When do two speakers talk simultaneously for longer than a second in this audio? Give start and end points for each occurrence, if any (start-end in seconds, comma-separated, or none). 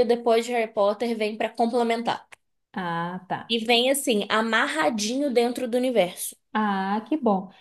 none